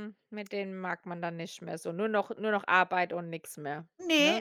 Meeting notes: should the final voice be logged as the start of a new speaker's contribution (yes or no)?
yes